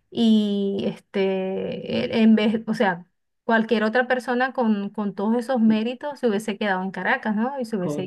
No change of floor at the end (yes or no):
no